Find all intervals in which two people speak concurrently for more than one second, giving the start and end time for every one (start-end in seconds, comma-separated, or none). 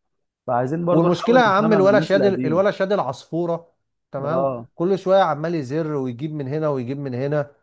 0.9-2.6